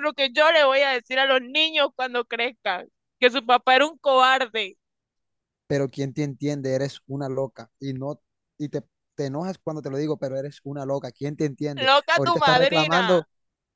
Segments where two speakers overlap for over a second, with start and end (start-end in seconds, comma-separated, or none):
11.9-13.3